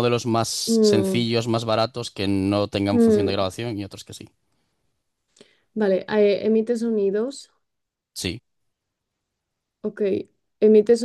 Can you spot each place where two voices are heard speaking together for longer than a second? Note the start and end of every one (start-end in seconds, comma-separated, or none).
none